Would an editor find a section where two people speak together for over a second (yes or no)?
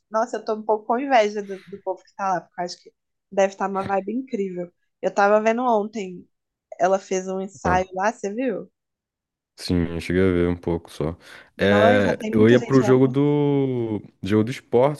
yes